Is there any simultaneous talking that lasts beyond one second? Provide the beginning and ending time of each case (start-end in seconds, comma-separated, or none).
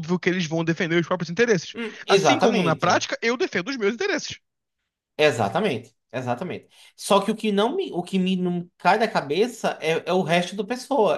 1.7-3.1